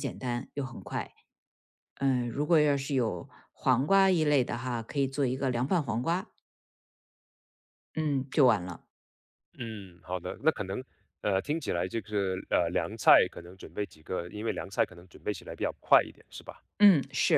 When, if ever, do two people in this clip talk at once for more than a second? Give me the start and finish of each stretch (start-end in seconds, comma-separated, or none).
none